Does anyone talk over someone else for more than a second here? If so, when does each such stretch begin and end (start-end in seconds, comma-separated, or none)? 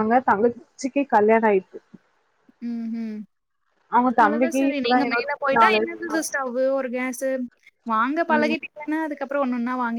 4.2-6.1